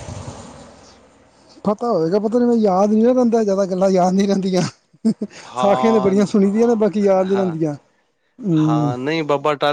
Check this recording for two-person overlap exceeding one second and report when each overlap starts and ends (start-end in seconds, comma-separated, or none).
5.6-7.6